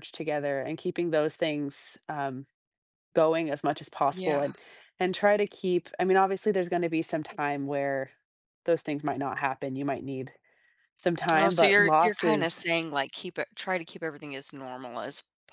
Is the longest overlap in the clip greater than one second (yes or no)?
yes